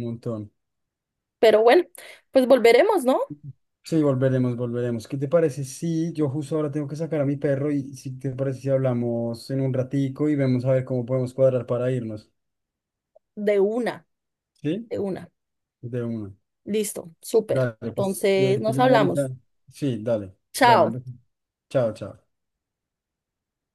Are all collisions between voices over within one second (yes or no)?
no